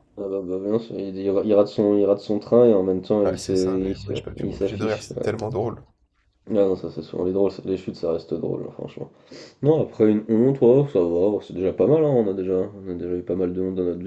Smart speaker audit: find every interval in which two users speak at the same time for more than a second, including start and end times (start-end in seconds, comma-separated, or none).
3.2-5.2